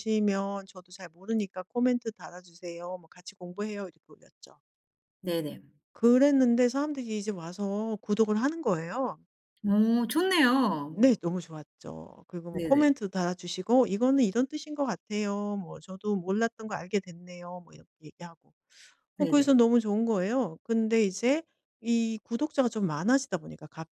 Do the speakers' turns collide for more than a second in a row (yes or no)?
no